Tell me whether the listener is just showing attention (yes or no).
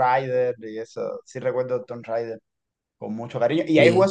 yes